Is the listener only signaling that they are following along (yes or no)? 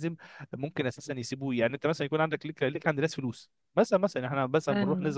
yes